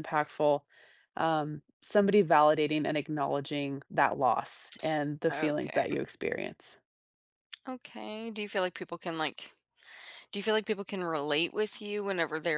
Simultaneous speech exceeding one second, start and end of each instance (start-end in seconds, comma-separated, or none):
none